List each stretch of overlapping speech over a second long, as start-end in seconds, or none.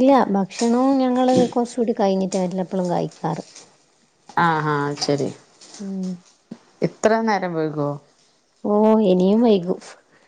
none